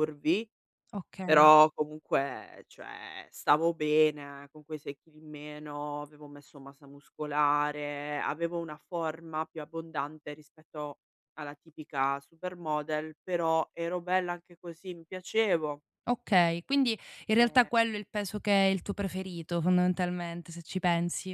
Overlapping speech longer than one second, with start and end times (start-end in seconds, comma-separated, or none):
none